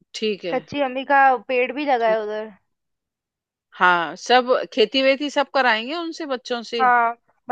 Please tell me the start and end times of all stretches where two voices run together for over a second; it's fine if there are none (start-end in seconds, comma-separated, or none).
none